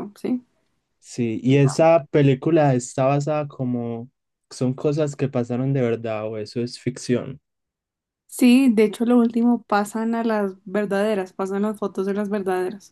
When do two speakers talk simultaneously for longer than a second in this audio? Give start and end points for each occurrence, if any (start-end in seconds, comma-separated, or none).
none